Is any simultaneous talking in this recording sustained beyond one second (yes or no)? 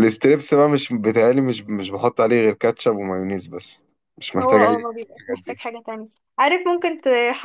yes